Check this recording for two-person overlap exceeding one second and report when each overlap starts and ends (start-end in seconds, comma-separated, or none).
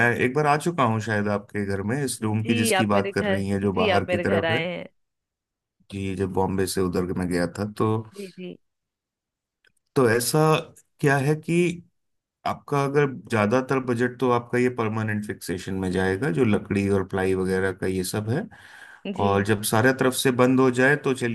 2.2-4.6